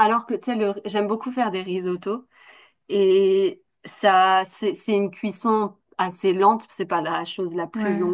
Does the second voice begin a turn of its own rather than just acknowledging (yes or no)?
no